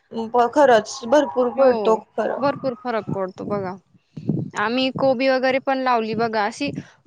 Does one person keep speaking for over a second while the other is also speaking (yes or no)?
no